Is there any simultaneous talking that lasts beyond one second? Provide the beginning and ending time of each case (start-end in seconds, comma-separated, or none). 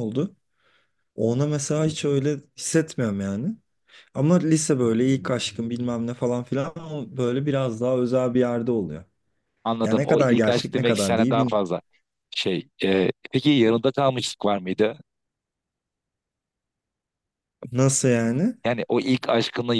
9.8-11.6